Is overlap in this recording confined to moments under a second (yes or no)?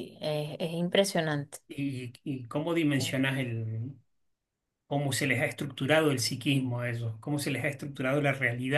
yes